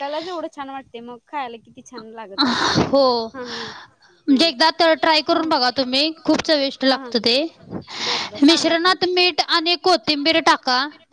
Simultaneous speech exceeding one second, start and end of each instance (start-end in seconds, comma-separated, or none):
none